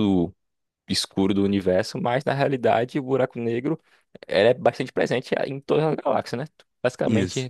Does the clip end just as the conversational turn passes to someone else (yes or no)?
no